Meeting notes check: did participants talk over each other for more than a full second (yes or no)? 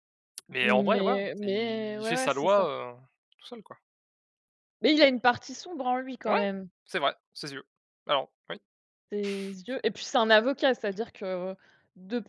yes